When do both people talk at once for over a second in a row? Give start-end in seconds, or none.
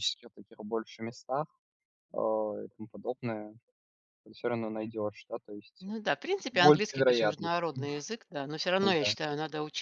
6.5-7.7